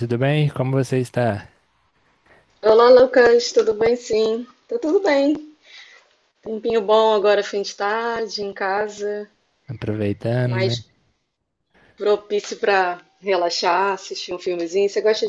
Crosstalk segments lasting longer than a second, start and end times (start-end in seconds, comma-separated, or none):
none